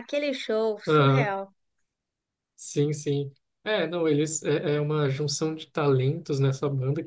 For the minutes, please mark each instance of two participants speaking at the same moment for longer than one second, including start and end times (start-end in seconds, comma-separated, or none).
none